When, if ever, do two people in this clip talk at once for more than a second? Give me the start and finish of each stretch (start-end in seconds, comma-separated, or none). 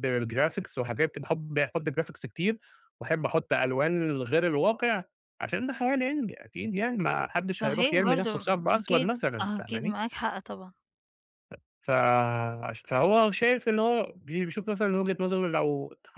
7.6-10.0